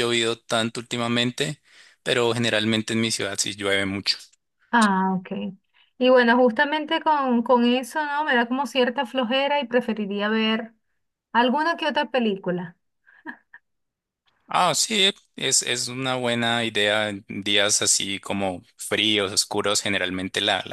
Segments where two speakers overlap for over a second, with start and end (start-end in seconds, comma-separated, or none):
none